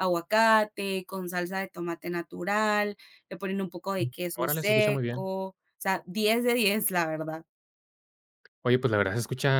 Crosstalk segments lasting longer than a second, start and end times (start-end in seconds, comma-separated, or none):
4.0-5.3